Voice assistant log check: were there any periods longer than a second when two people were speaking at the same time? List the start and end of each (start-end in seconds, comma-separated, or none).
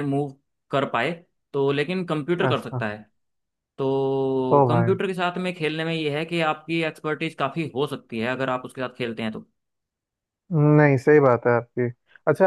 none